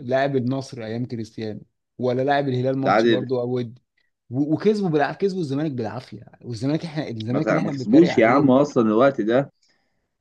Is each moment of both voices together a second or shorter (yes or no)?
no